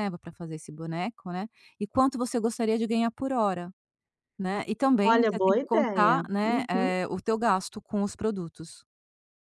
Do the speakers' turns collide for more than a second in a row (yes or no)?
yes